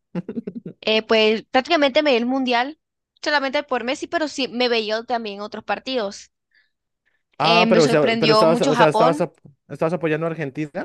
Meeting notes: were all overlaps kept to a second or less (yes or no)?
no